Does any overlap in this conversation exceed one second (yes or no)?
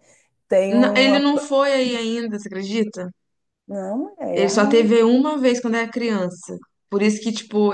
no